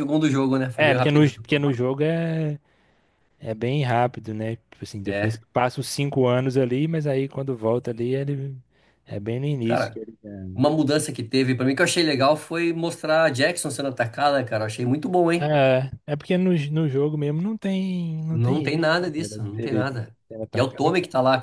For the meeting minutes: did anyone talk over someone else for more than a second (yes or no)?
yes